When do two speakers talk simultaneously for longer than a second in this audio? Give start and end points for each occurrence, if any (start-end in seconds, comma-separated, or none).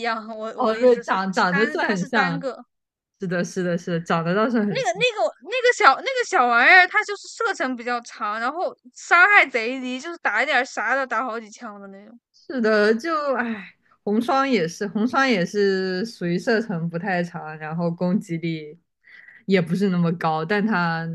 0.6-2.5